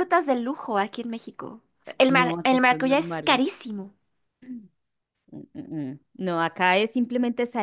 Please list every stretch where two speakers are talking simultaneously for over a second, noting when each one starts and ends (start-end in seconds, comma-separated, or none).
2.1-3.4